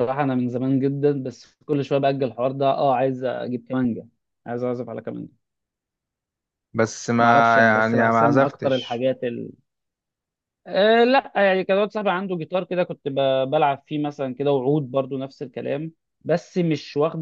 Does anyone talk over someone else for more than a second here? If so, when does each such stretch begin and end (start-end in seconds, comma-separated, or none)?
7.2-9.1